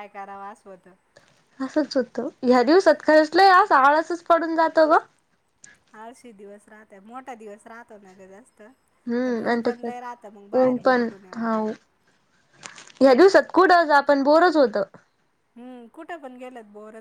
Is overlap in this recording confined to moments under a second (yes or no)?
no